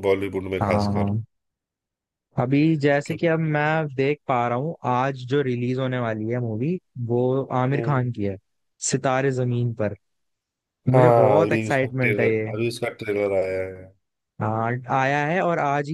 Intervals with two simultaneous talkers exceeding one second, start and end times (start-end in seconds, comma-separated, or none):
10.9-12.5